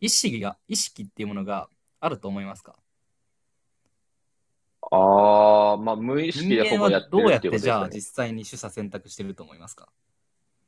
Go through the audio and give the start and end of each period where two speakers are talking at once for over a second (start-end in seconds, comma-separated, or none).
6.3-8.0